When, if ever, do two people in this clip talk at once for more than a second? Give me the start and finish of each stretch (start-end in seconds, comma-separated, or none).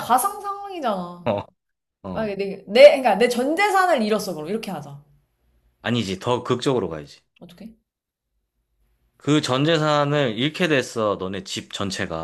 none